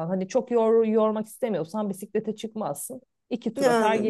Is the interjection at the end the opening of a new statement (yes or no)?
yes